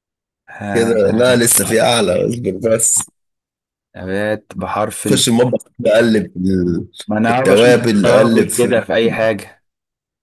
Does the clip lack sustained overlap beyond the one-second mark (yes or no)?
no